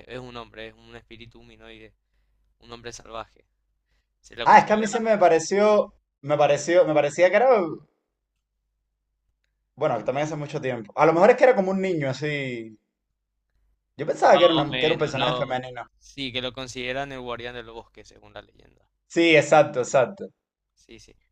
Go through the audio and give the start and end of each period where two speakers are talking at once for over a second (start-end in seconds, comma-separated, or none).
14.1-15.6